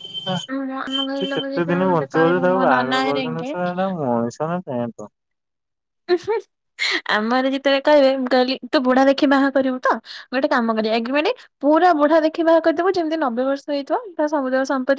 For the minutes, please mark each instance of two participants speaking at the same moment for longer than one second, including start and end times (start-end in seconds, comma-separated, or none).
1.2-3.5